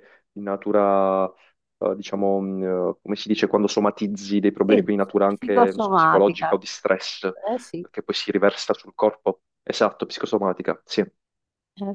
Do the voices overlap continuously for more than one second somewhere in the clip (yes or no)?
yes